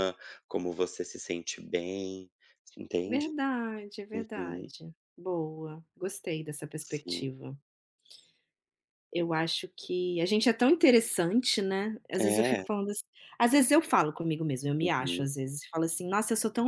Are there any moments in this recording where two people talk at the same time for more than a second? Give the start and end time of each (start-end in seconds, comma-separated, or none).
none